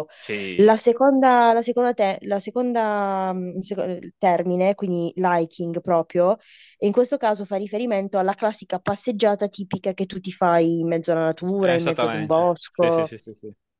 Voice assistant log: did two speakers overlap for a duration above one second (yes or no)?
yes